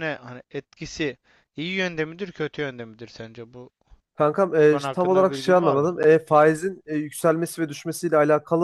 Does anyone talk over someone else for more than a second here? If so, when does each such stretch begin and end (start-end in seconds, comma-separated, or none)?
4.6-5.9